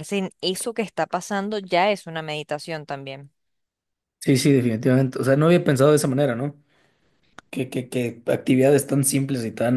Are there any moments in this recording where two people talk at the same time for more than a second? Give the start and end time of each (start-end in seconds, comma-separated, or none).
none